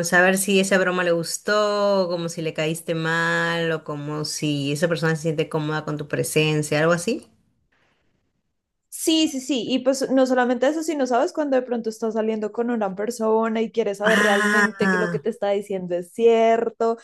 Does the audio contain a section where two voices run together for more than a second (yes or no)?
yes